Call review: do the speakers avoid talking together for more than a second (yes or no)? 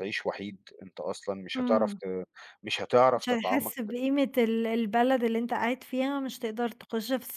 yes